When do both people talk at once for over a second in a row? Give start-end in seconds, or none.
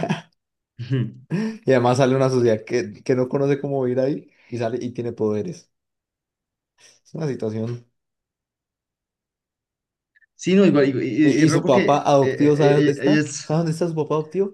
11.2-13.5